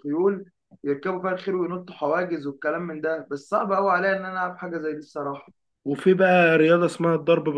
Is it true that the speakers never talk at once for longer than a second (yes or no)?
yes